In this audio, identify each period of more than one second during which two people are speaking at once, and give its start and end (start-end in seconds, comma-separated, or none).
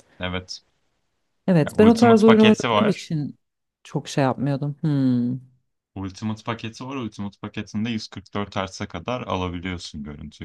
1.7-3.1